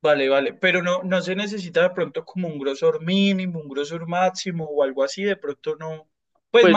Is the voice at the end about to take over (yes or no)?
yes